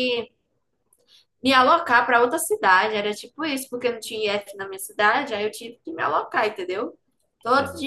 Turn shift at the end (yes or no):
no